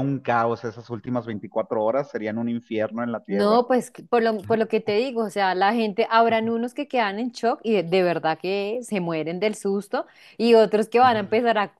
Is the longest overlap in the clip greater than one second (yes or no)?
no